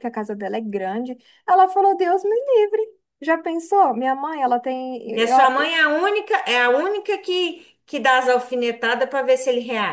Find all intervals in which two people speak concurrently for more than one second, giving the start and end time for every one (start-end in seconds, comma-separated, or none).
none